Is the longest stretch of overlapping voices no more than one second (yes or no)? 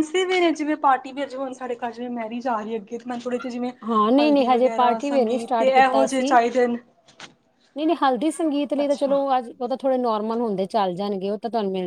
no